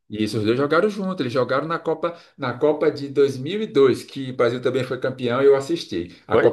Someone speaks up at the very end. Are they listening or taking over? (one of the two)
listening